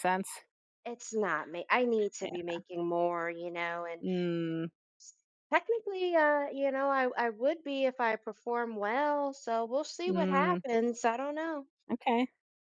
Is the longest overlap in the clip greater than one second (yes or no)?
no